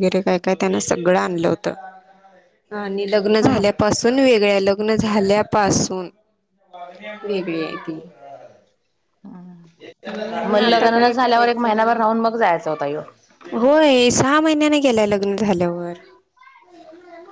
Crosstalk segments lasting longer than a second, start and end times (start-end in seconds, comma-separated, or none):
10.5-12.0